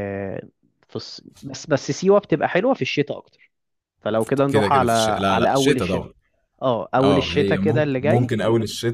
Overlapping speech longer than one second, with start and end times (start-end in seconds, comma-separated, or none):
4.5-6.1, 7.0-8.3